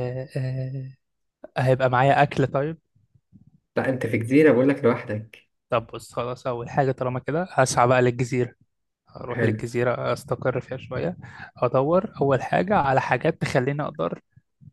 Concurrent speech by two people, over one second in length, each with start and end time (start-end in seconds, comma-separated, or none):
none